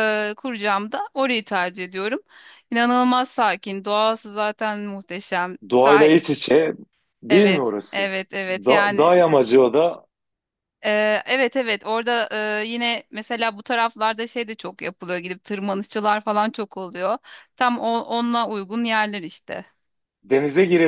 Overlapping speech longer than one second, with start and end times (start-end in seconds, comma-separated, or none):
7.3-9.1